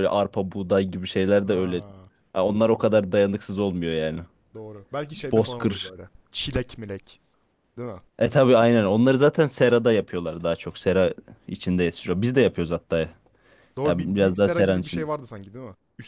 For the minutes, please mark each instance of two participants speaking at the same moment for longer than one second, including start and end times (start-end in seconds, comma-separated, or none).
13.8-15.1